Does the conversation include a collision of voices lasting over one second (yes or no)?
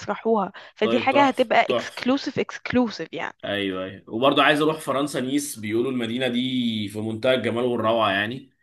yes